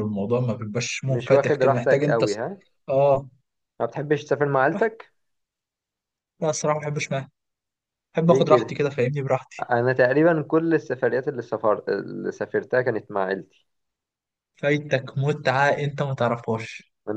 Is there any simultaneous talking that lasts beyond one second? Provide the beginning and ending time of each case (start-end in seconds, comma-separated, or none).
1.0-2.4